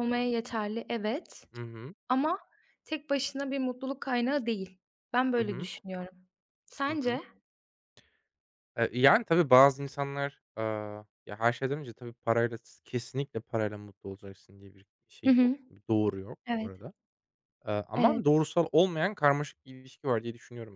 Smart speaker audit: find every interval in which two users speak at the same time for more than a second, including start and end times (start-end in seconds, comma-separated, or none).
none